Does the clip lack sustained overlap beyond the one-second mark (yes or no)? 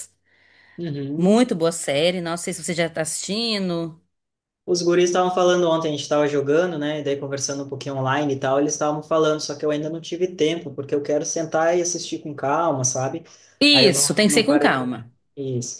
no